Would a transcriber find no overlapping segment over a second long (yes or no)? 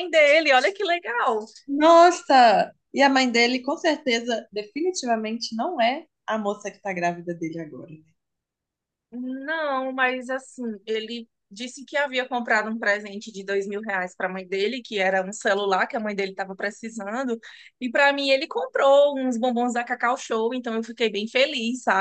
yes